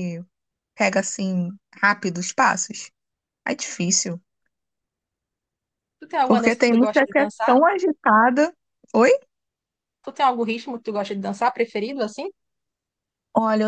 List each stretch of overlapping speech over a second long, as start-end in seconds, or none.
6.2-7.6